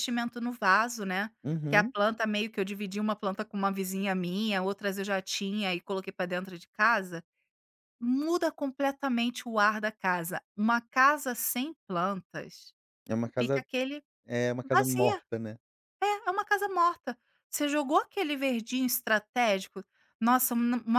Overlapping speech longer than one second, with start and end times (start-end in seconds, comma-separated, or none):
none